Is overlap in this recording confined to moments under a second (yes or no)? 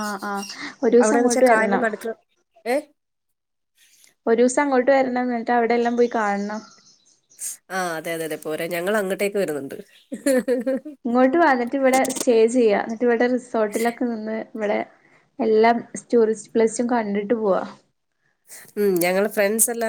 yes